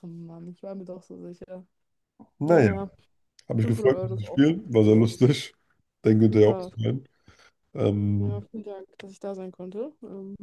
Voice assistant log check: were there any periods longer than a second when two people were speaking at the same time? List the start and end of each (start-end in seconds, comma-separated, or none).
3.6-5.1